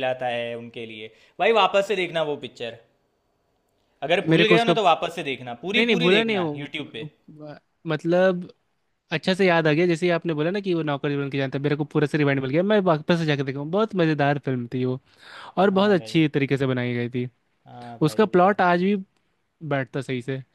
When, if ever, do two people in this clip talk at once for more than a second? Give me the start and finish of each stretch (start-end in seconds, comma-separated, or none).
5.7-7.1